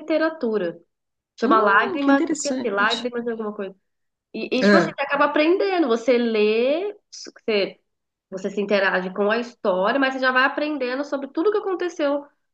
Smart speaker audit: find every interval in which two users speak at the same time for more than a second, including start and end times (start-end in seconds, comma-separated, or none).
1.4-3.1